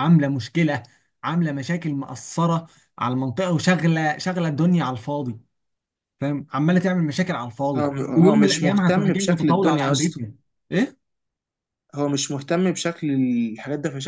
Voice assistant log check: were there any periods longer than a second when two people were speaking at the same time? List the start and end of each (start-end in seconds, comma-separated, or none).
7.8-10.2